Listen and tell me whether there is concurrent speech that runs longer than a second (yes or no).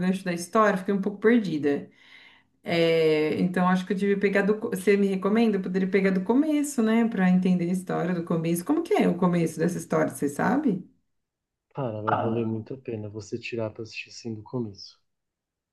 no